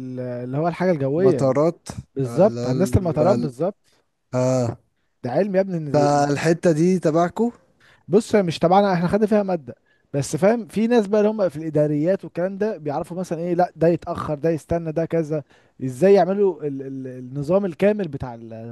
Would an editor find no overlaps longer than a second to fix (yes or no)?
no